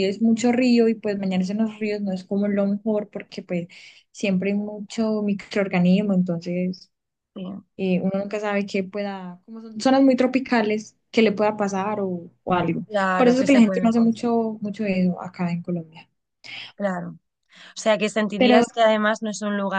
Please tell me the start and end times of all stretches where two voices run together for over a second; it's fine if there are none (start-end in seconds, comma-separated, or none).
12.9-14.2